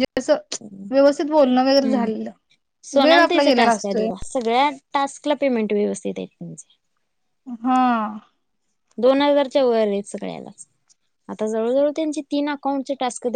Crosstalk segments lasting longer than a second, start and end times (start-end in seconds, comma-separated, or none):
none